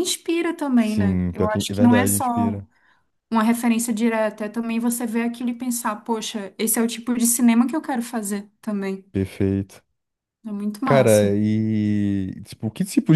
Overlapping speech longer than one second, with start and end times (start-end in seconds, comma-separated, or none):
0.8-2.6